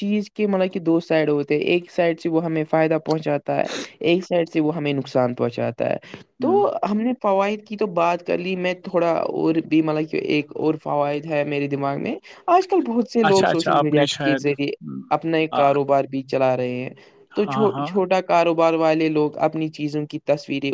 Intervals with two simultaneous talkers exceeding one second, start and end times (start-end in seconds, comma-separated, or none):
13.3-14.7